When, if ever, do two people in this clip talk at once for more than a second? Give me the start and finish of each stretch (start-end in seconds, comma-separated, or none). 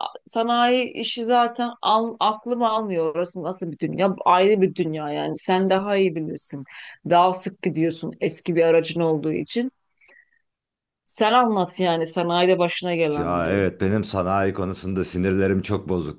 none